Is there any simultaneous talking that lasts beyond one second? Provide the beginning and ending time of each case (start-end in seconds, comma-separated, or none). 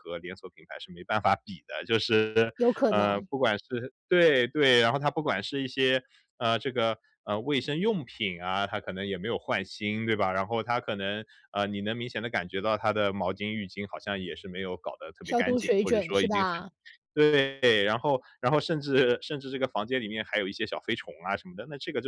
15.2-16.6